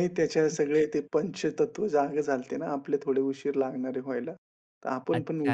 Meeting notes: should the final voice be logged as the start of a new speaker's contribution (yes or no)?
yes